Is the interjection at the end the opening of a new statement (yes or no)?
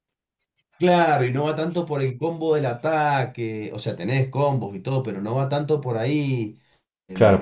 yes